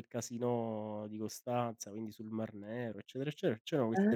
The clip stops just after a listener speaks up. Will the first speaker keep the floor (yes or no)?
yes